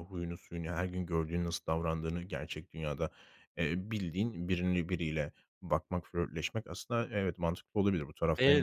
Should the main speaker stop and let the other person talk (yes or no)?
no